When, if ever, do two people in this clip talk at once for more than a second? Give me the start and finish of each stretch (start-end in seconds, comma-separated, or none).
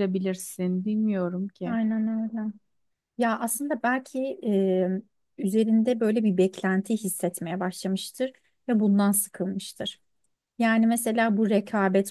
none